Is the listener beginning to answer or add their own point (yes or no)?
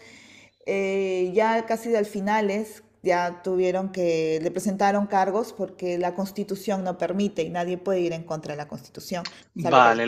yes